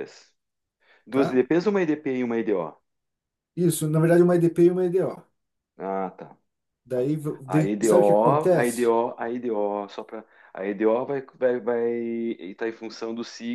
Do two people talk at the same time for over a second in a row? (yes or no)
yes